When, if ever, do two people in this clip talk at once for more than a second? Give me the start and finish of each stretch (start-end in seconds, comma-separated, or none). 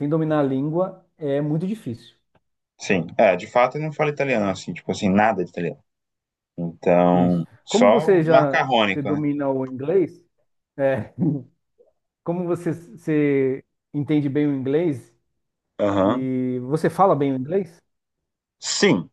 7.1-9.2